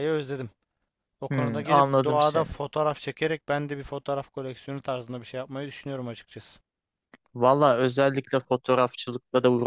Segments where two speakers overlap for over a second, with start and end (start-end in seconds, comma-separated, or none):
1.3-2.5